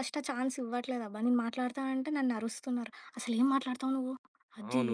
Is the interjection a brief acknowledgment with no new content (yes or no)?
no